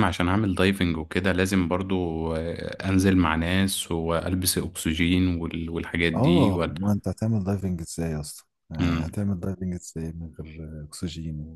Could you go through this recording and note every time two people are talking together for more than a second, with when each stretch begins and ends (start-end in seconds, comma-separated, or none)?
none